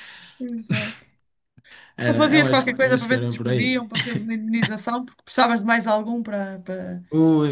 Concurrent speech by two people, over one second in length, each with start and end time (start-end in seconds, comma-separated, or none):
2.0-3.8